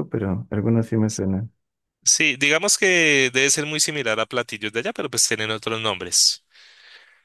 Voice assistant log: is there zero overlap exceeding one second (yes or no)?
yes